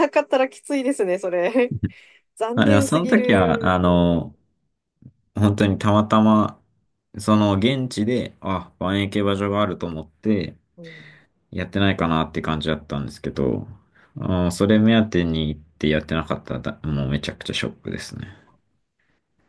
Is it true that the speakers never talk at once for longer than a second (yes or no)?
no